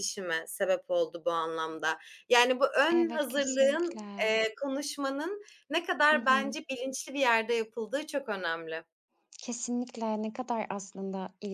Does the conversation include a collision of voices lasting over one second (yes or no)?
yes